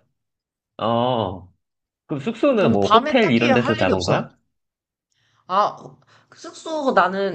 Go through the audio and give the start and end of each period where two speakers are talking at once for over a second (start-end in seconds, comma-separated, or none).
2.5-4.2